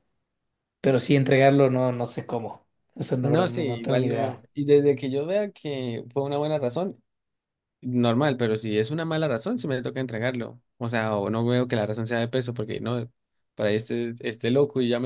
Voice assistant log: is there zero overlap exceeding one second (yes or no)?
no